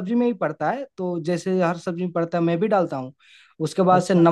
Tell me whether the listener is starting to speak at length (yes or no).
no